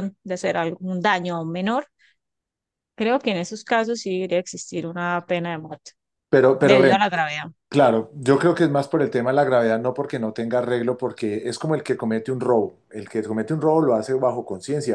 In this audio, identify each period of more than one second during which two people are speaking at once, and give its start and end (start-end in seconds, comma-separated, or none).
none